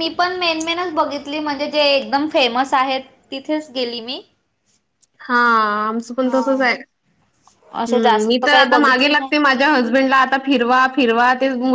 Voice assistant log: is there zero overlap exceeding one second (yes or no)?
no